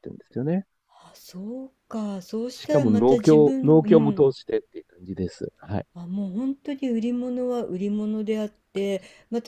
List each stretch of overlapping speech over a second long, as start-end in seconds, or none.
2.5-4.3